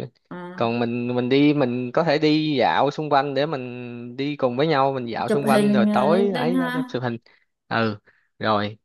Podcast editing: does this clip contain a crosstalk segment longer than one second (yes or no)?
yes